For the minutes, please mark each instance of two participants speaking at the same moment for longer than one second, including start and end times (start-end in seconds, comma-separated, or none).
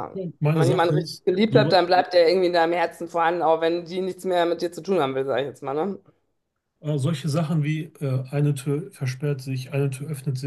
0.5-1.8